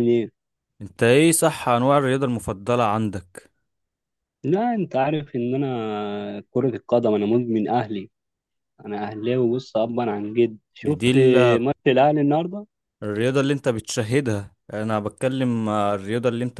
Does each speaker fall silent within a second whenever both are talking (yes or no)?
yes